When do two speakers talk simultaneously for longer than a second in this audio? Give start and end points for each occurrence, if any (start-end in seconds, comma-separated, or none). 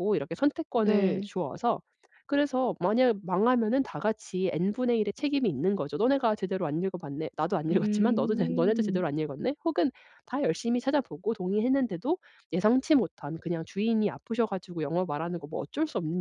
7.7-9.0